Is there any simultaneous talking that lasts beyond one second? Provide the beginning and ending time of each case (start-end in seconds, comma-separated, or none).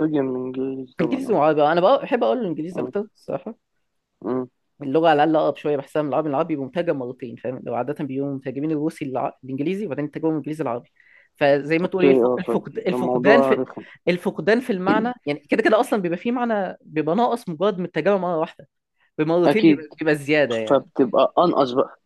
11.8-13.6